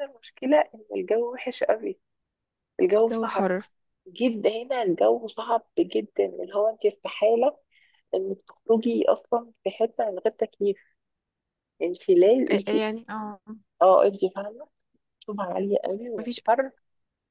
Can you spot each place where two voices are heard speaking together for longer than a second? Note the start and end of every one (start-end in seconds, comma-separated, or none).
none